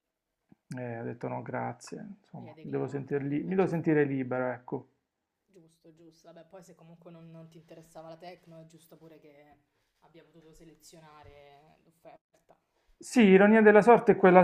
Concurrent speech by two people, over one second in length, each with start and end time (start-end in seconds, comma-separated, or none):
2.4-3.9